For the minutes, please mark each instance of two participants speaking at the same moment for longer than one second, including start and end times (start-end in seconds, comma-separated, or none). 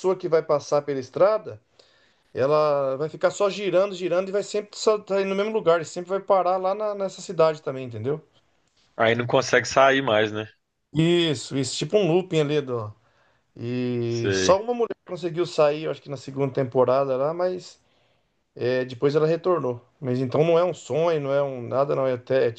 none